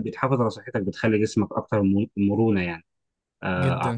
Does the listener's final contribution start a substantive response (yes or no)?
no